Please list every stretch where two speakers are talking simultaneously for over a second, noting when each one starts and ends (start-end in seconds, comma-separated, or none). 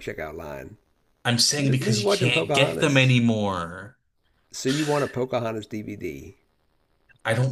1.6-3.2